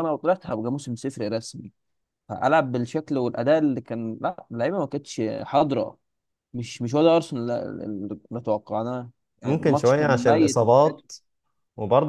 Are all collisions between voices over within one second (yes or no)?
no